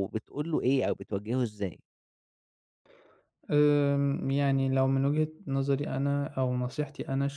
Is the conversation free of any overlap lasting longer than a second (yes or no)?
yes